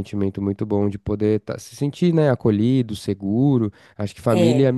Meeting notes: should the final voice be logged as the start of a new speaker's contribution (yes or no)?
no